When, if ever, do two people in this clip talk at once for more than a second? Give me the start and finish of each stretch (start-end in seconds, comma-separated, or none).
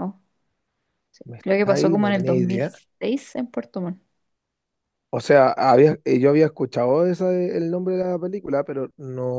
1.3-2.8